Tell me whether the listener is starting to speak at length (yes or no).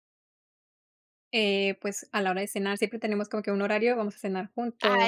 yes